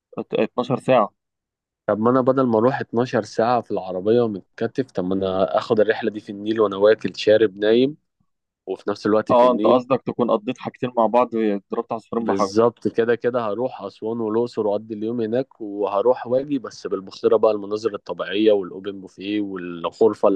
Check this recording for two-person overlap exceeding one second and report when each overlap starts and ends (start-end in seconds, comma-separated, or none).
none